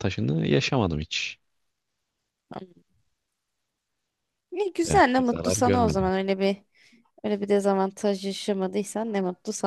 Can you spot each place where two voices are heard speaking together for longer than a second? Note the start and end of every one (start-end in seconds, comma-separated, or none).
4.8-6.1